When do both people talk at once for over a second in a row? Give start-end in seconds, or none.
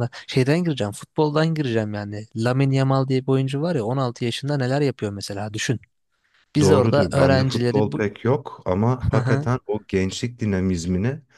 6.6-8.0